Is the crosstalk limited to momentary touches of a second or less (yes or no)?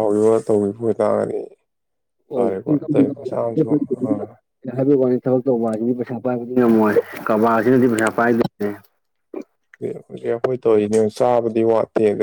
yes